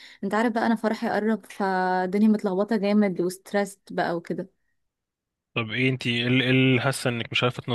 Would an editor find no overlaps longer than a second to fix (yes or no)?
yes